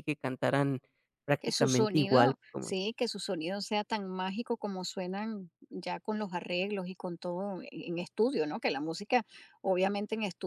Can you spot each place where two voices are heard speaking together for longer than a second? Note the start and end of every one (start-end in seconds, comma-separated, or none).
1.4-3.0